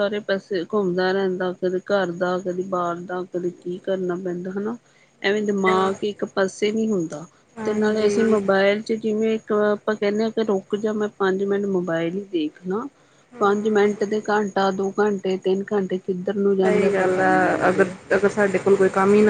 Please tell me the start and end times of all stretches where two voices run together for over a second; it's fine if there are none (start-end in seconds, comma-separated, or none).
16.6-17.9